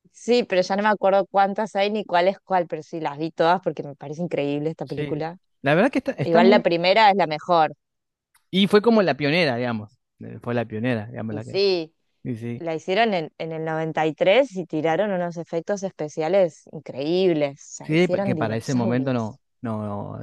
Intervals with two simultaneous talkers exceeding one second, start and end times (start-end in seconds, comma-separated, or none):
17.8-19.4